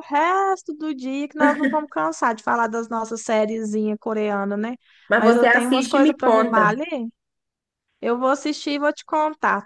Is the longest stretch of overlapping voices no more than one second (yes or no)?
no